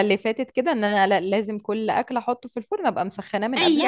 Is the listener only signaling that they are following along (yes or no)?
no